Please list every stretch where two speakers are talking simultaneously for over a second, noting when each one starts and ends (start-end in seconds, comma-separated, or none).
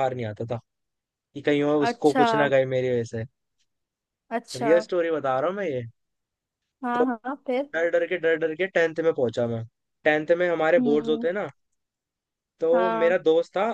none